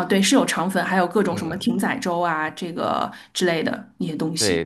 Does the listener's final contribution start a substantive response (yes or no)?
yes